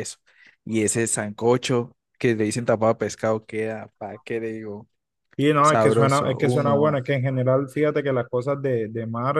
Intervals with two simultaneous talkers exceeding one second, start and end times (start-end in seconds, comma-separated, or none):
5.6-7.0